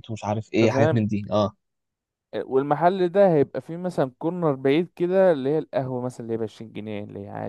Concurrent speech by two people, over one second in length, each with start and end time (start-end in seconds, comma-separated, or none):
none